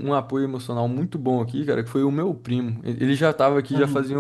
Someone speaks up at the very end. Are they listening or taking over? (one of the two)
listening